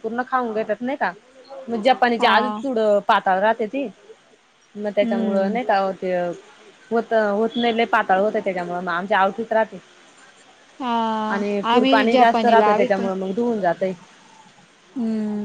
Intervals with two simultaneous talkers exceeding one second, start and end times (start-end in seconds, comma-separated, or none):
11.7-13.0